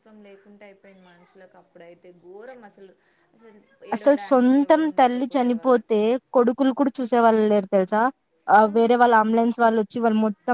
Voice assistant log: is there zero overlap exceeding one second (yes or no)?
no